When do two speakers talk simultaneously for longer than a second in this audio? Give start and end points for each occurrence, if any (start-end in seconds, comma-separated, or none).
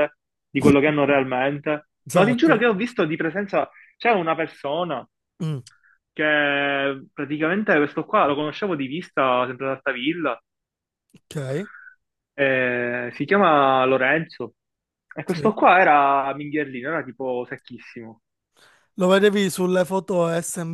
none